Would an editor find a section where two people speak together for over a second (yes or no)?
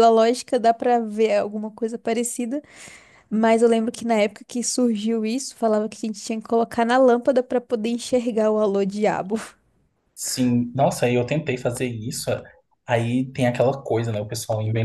no